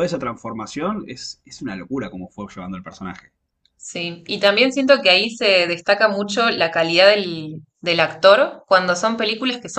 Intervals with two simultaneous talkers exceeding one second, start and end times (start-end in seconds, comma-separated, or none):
none